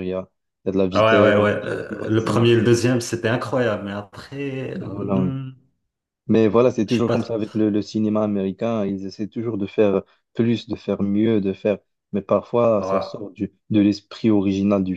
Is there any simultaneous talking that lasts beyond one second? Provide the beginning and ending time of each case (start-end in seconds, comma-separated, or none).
0.9-2.7